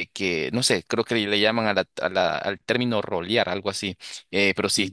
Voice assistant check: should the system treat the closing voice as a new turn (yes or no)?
no